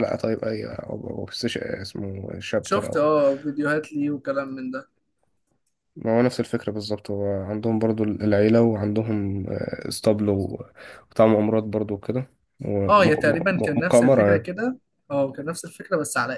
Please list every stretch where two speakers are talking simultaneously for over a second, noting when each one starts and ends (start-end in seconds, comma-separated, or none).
12.9-14.5